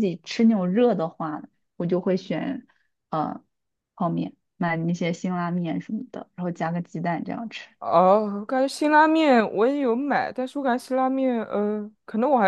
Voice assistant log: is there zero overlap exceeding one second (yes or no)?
yes